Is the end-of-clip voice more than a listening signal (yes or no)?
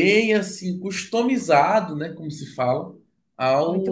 no